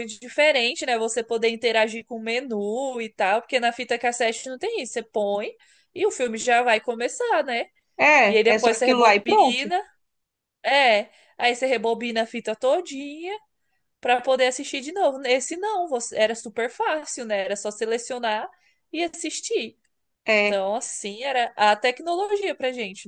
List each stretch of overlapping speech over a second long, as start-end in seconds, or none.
8.2-9.7